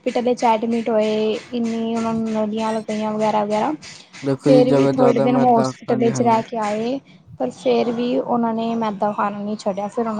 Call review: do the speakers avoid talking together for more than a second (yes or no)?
no